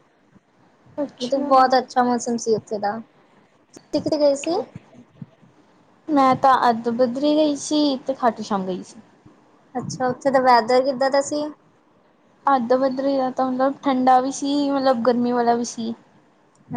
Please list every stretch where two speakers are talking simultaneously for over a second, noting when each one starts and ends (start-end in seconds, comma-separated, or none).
none